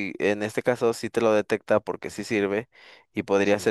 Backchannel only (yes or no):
yes